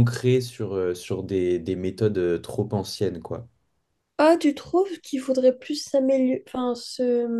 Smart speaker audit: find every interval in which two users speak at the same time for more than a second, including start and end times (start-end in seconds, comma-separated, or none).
none